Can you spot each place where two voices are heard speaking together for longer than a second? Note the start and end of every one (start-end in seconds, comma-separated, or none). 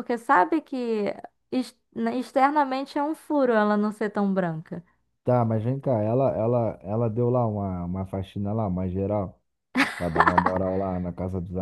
none